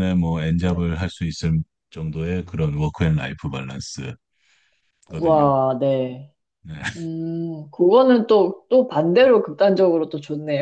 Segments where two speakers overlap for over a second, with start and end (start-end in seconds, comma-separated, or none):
none